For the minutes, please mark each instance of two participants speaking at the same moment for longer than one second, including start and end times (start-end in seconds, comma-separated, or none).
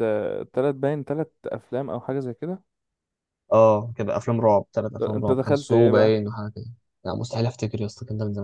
5.0-6.2